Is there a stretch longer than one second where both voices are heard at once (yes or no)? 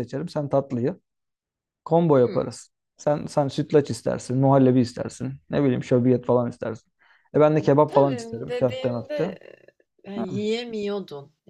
yes